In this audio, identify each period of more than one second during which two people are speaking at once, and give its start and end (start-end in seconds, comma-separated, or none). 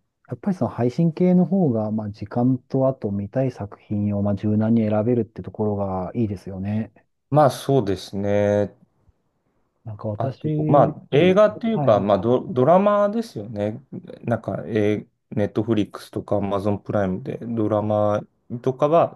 11.1-12.4